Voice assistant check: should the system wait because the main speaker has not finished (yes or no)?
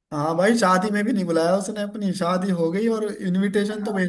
yes